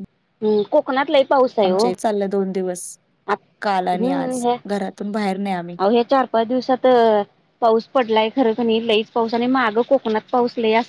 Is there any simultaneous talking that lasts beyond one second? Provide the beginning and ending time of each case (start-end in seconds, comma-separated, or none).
none